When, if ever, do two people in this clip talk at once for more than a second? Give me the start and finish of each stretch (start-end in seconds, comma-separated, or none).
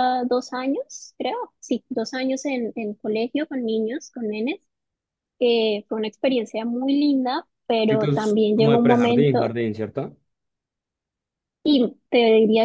7.9-9.5